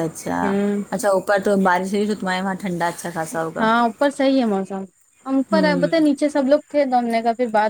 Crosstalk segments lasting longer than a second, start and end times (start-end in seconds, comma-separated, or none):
none